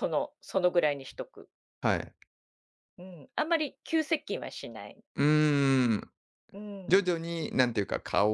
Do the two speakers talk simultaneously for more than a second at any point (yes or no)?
no